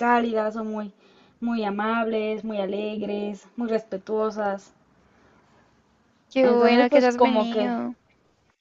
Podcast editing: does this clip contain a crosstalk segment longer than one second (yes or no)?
yes